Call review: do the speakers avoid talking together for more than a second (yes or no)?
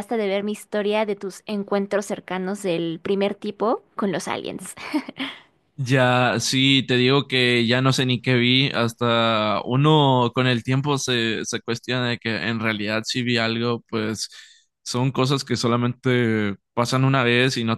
yes